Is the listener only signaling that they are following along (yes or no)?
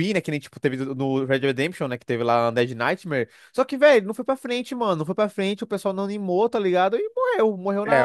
no